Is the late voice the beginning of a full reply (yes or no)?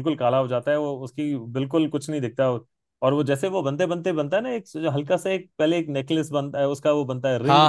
yes